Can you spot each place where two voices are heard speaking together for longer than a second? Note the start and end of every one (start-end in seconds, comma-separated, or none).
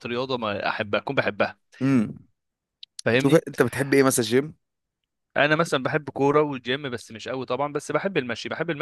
none